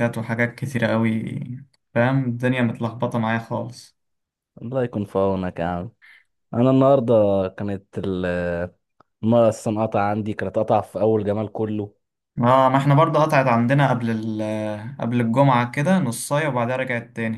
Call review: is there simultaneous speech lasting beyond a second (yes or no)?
no